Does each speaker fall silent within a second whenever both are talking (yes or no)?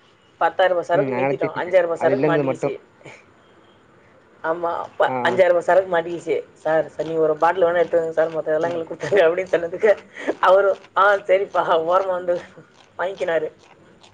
no